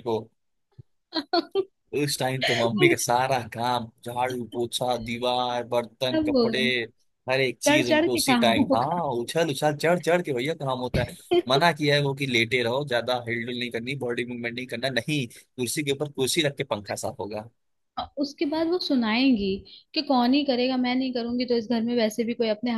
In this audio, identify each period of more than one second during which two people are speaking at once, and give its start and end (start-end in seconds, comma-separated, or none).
7.6-9.0